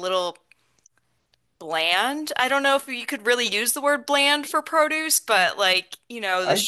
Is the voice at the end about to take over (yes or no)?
no